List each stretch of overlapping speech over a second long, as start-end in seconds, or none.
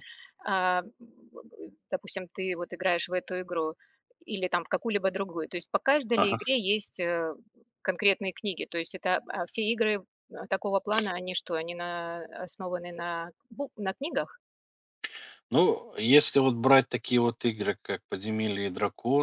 none